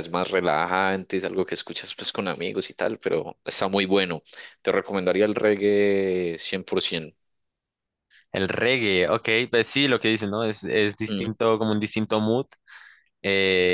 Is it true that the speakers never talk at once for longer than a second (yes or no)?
yes